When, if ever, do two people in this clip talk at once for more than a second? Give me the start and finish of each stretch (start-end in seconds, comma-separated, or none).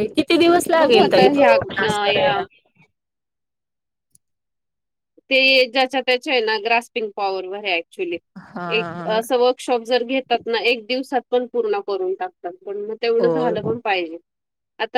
0.8-2.4